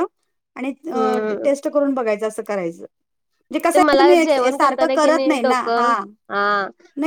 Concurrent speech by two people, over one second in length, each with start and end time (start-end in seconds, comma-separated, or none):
3.7-5.9